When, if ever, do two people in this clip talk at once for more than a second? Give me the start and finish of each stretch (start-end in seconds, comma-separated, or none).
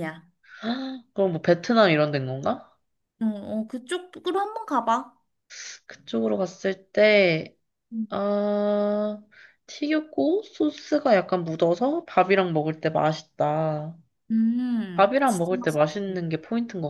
14.9-16.2